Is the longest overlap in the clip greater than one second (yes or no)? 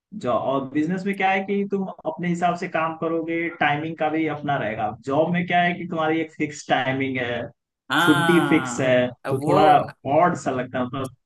yes